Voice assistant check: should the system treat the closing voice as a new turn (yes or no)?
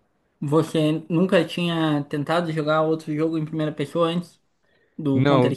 yes